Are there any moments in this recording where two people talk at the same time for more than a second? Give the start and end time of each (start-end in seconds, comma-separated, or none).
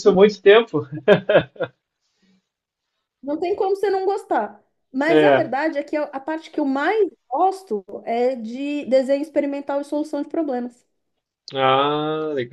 none